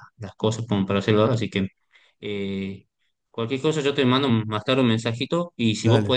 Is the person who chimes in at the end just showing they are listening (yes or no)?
yes